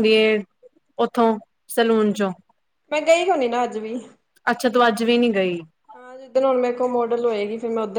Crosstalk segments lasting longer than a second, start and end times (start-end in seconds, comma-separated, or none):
none